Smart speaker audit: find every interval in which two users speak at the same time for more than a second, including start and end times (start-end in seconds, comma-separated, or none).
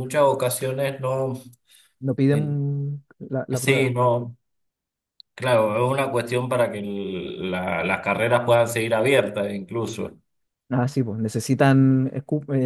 none